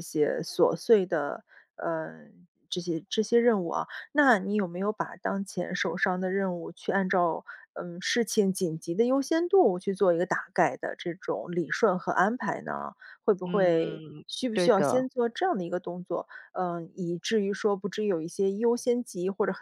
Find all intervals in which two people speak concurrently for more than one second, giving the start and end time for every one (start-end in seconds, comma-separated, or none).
13.4-15.1